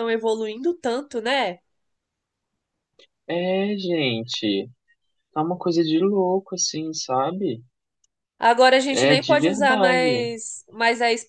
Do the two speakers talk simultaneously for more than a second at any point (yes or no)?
yes